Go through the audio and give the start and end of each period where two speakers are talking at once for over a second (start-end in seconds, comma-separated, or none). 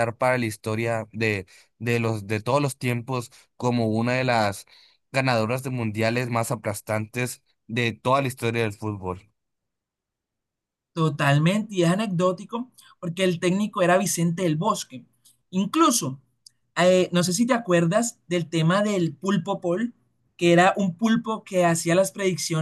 none